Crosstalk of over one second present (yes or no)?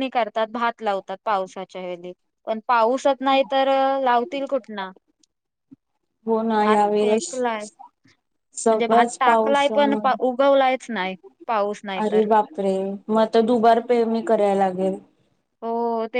yes